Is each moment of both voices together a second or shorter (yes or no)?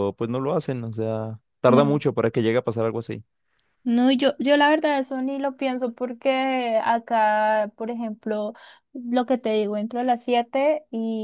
yes